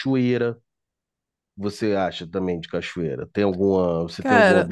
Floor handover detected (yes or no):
yes